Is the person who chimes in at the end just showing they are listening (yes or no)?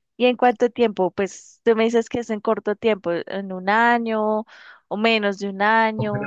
no